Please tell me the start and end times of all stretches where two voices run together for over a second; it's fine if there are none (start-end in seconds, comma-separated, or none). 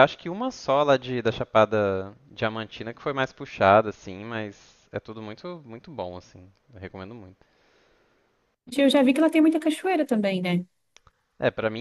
none